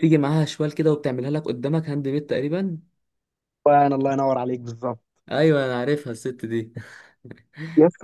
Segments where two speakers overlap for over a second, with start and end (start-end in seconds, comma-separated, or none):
none